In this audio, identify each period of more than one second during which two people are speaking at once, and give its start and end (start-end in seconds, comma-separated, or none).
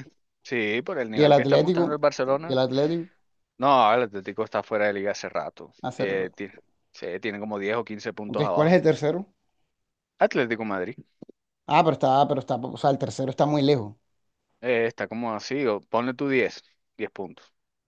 1.1-2.6